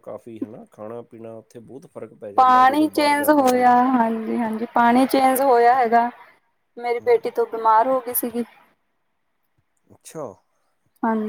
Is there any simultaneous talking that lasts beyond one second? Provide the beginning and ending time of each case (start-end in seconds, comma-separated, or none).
2.4-3.8